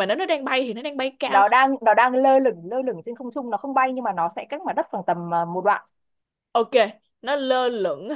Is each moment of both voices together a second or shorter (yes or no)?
yes